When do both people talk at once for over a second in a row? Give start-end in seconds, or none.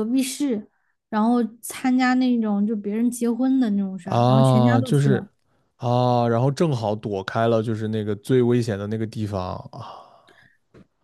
4.0-5.3